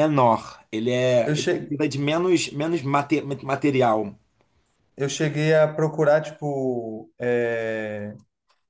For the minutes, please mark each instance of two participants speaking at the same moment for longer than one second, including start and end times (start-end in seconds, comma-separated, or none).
none